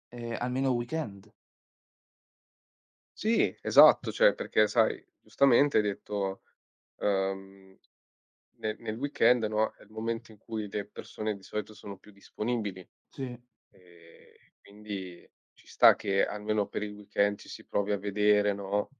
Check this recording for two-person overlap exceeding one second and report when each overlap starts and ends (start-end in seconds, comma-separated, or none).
none